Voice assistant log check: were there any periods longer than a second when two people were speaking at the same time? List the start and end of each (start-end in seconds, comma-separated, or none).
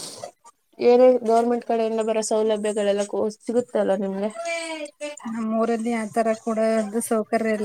none